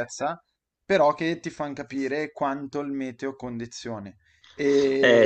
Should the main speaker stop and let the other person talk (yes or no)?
yes